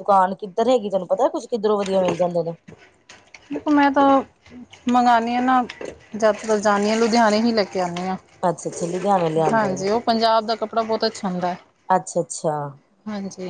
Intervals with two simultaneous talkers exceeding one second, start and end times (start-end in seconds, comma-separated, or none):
none